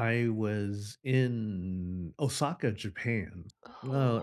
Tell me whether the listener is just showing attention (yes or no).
yes